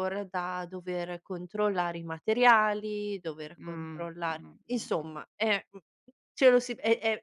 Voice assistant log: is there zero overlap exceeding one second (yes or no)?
no